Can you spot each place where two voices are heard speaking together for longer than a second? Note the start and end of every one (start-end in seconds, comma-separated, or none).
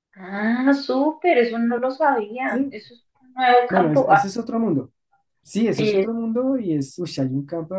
none